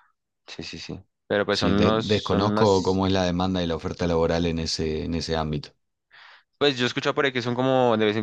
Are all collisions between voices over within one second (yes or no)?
no